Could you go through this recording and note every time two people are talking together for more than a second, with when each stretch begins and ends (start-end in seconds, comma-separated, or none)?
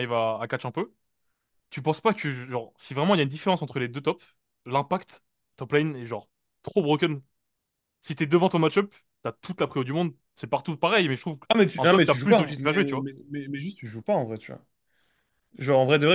11.8-13.1